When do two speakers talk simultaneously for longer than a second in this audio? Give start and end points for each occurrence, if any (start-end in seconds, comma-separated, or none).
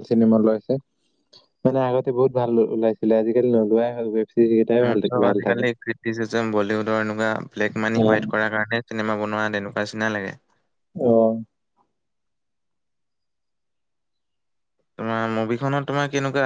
none